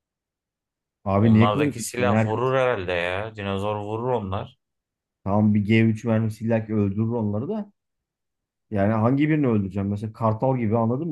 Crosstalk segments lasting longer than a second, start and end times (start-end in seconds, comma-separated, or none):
1.2-2.5